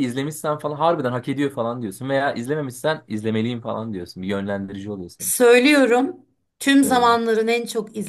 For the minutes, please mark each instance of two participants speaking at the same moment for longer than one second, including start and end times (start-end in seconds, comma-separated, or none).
none